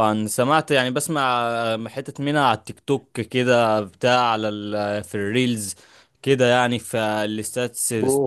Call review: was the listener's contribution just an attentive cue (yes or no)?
no